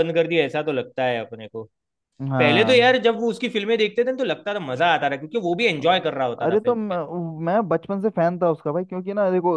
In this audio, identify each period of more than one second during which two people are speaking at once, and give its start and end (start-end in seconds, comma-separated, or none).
none